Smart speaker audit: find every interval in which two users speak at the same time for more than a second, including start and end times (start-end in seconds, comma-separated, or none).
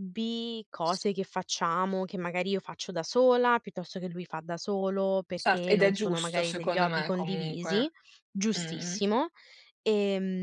5.3-7.9